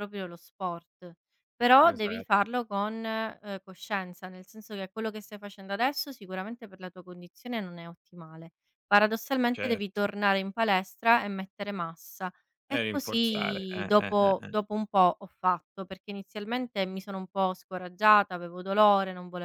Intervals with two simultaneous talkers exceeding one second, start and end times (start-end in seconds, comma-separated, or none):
12.7-14.5